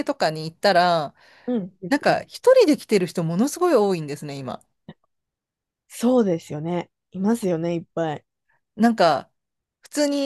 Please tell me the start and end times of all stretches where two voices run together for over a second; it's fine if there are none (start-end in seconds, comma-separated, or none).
none